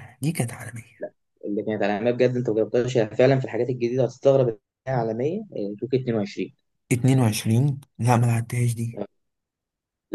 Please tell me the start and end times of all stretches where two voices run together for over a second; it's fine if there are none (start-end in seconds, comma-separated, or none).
none